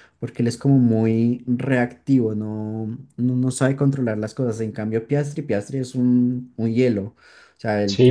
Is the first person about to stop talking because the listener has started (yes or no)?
yes